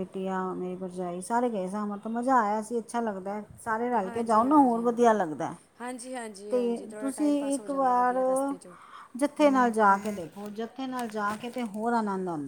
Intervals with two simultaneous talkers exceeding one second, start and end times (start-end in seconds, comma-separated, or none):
none